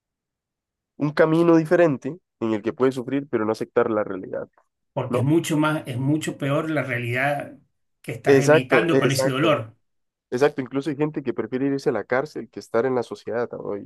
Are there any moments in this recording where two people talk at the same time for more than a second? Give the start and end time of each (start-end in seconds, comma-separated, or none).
8.2-9.6